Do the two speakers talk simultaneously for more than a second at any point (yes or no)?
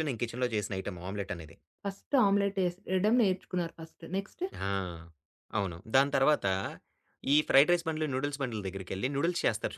no